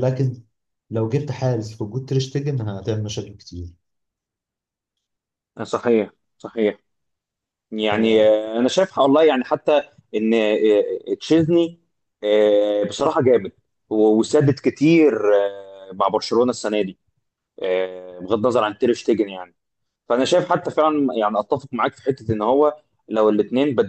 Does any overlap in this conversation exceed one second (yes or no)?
no